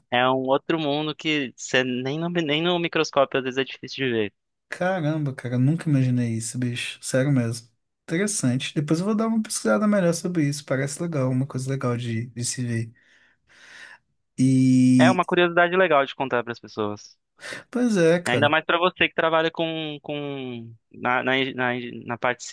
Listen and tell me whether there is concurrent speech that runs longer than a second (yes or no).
no